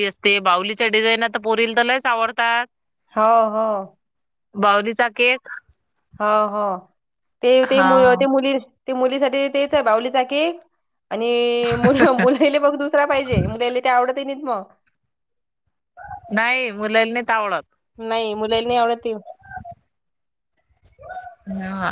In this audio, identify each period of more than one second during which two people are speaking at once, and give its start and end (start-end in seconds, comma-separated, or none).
none